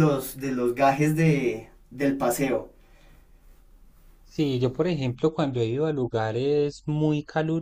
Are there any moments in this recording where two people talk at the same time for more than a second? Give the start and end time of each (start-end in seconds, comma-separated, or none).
none